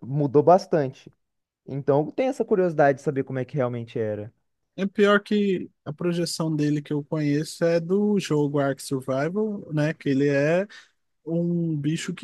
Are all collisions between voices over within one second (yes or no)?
yes